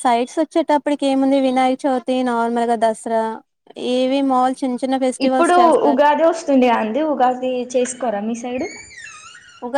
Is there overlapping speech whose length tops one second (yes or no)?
no